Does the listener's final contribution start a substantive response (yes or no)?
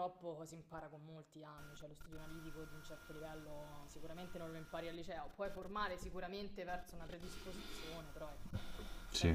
no